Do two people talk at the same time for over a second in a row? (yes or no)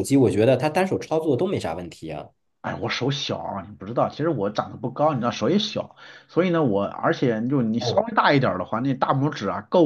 no